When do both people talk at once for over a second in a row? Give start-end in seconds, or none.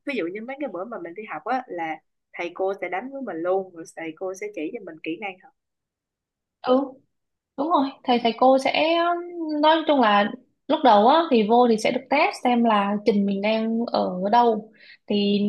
none